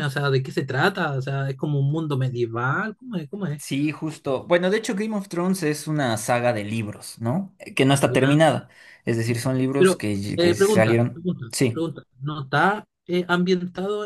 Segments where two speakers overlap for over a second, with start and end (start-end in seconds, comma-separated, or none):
9.8-11.9